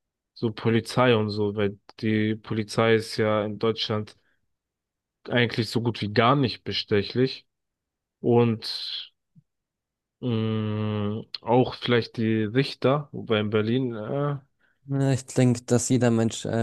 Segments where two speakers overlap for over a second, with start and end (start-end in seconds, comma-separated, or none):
none